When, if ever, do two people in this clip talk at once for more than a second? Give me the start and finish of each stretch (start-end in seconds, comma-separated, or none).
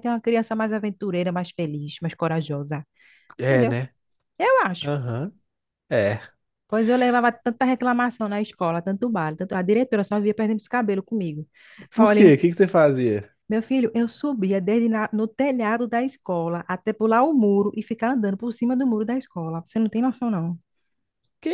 none